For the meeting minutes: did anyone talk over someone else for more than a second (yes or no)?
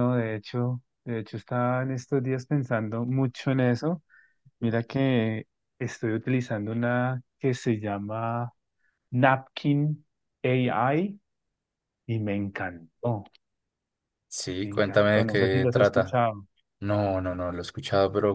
yes